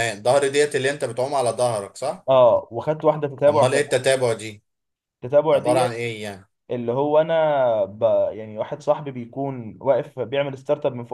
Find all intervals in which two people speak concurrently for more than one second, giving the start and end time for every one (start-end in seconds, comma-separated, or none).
none